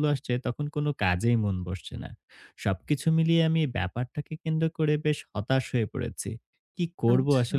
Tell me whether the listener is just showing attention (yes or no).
yes